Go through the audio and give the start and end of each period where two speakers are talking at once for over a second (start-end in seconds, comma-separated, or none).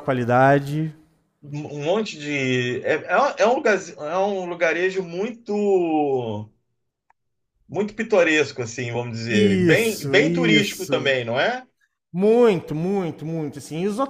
9.3-11.2